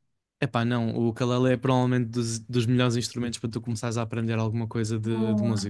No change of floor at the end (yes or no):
no